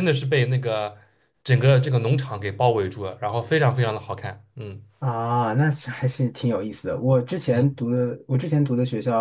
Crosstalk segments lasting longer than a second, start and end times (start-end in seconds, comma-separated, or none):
none